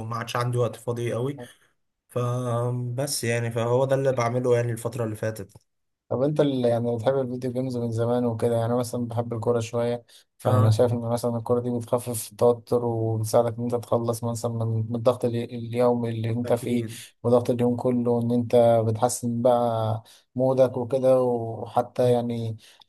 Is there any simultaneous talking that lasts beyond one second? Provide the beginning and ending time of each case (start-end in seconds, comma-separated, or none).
none